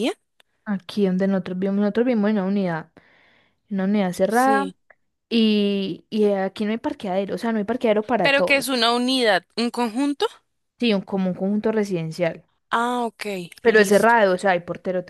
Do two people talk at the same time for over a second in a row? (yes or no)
no